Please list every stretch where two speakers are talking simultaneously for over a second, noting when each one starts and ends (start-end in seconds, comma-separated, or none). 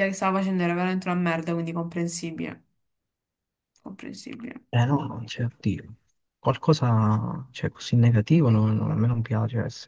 none